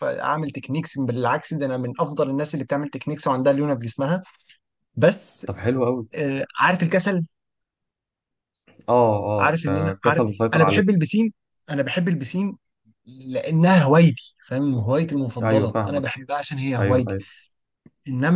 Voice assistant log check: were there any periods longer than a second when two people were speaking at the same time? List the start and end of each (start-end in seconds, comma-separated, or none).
9.4-10.9